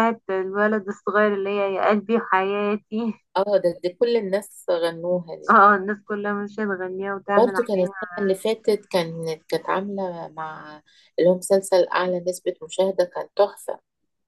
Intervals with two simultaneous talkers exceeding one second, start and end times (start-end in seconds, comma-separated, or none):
none